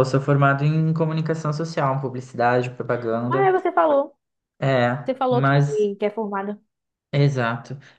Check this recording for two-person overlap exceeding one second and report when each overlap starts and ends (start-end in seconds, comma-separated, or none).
none